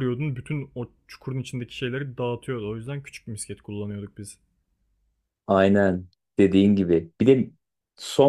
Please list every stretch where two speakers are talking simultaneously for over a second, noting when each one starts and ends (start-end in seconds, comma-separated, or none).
none